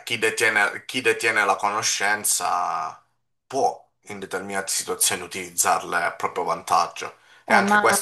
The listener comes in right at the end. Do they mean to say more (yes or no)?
no